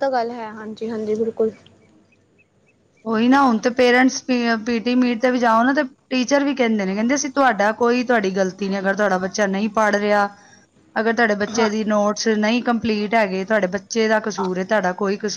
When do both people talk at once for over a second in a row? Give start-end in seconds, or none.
none